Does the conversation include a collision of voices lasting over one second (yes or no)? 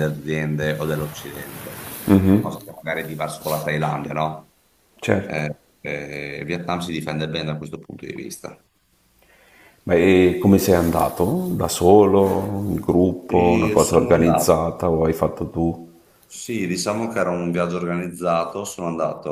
yes